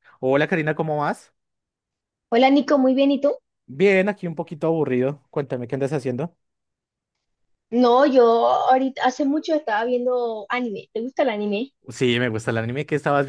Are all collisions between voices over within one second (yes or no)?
yes